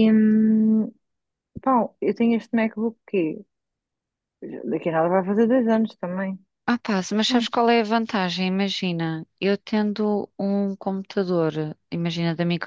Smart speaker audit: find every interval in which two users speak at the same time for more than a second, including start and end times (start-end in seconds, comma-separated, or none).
none